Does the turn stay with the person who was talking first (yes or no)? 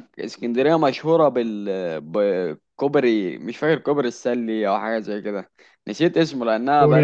yes